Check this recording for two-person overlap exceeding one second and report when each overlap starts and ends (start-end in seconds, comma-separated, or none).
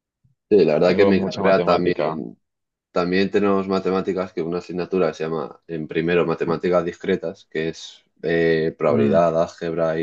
0.8-2.2